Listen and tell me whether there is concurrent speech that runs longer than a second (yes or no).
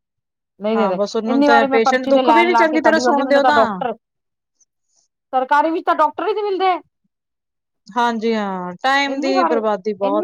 yes